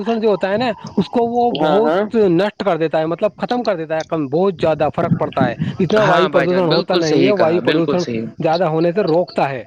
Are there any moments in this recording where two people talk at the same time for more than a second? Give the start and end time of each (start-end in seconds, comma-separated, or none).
6.0-8.0